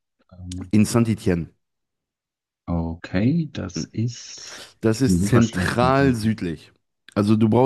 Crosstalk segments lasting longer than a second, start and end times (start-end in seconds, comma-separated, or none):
4.8-6.3